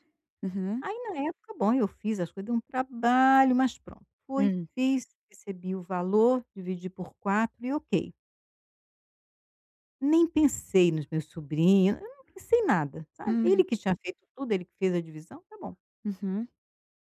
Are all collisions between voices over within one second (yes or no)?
yes